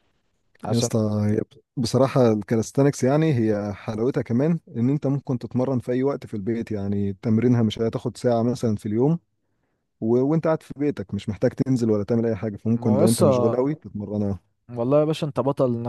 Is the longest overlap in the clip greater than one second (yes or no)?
no